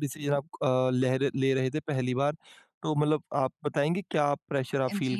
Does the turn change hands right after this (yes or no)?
yes